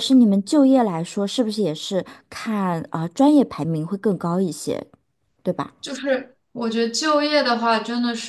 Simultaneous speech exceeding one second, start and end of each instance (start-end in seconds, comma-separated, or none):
none